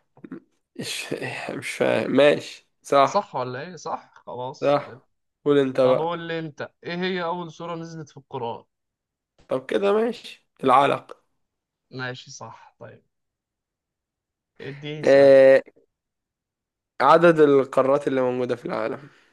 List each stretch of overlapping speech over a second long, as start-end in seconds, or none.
none